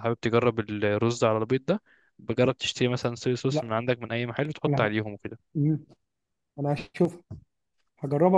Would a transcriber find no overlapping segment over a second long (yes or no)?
yes